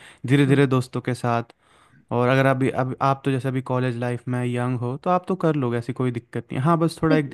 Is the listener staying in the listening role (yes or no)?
yes